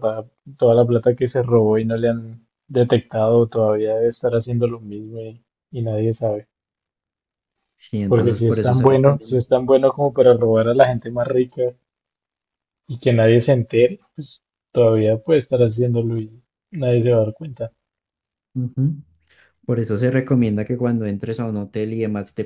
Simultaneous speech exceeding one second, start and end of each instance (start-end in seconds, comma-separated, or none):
8.1-9.4